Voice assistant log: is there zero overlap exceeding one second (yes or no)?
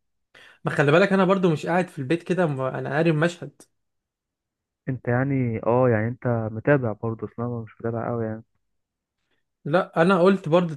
yes